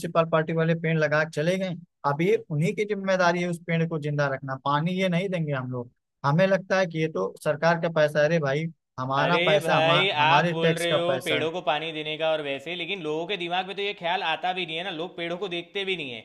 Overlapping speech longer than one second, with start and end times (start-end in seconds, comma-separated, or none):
9.2-11.5